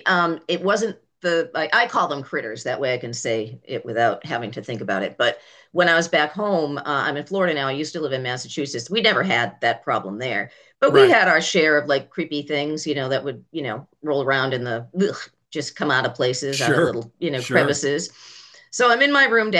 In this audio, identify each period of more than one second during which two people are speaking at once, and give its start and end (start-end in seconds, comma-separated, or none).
16.5-17.9